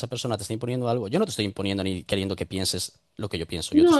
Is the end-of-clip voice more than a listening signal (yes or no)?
yes